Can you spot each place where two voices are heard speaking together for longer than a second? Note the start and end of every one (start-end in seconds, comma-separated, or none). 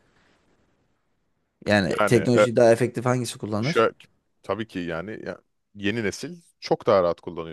none